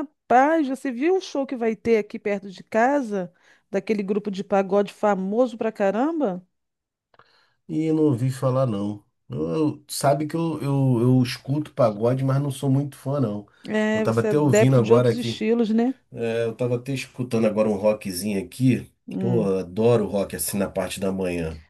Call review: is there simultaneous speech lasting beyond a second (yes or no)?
yes